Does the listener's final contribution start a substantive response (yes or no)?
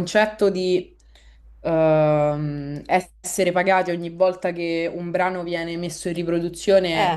no